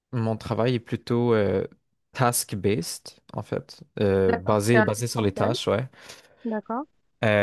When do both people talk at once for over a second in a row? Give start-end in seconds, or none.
4.3-5.5